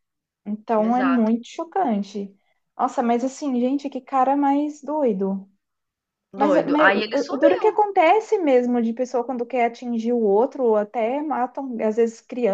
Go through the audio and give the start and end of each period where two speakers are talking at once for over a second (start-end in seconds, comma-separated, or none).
6.3-7.7